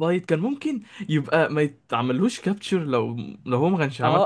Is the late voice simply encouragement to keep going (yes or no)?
no